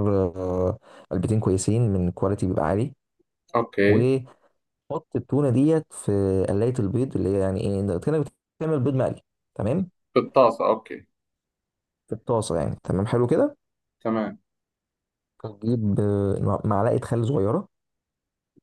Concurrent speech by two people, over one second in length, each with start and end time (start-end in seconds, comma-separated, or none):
none